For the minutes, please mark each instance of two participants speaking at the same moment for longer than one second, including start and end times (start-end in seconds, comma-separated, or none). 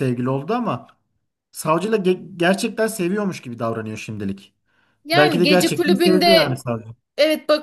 5.1-6.6